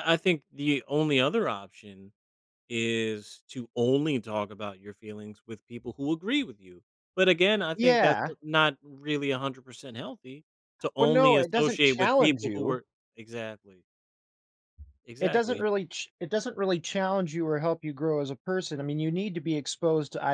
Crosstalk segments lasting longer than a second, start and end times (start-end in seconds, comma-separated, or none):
11.0-12.8